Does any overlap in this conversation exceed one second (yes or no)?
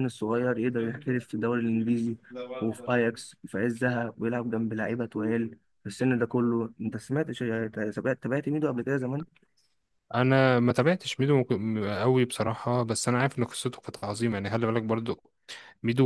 no